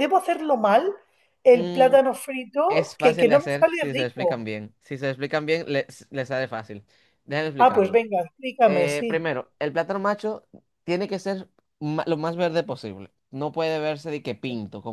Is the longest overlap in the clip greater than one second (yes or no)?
yes